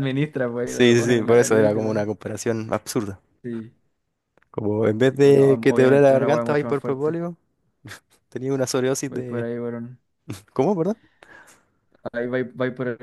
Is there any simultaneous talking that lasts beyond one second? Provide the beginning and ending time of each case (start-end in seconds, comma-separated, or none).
0.6-2.0, 5.0-7.2